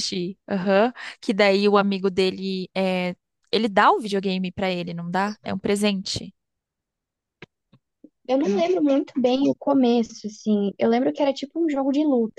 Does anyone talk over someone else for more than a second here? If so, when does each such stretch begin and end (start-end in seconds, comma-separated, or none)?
none